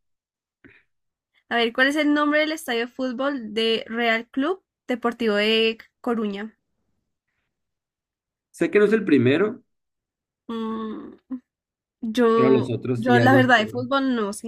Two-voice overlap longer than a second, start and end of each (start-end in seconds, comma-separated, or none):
12.3-13.7